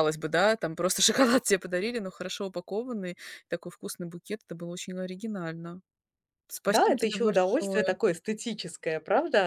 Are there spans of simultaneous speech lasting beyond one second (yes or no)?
yes